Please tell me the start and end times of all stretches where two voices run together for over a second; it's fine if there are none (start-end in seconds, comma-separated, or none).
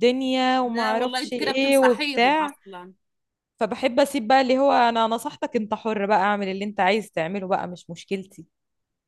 0.6-2.5